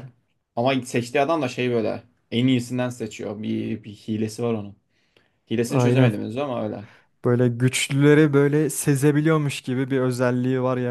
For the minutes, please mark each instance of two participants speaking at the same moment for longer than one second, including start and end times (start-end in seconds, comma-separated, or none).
none